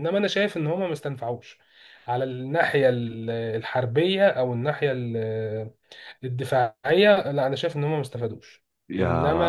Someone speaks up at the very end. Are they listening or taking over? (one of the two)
taking over